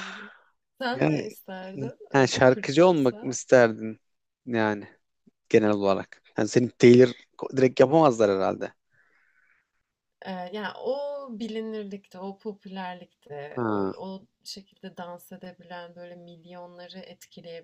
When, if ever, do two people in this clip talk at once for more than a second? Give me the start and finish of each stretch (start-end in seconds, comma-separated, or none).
2.1-3.4